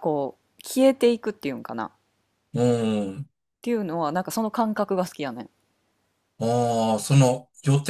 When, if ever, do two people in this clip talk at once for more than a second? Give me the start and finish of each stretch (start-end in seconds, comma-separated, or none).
none